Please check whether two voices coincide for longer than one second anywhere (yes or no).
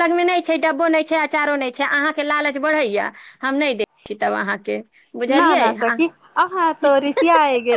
no